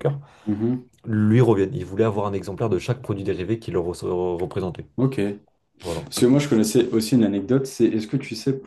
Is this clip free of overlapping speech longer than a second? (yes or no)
yes